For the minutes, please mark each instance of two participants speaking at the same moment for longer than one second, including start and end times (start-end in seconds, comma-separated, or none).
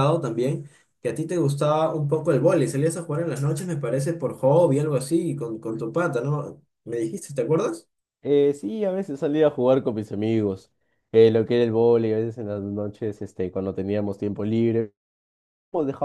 none